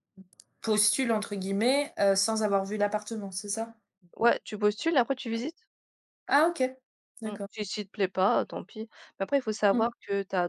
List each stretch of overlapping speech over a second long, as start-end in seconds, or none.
none